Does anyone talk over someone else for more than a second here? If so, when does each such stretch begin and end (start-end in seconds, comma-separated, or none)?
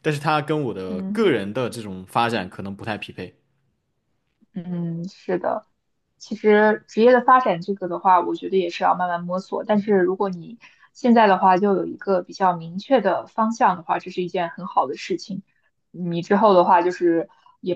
none